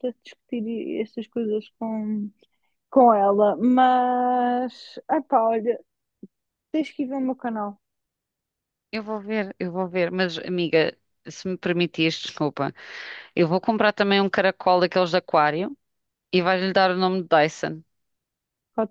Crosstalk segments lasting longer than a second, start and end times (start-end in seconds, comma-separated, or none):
none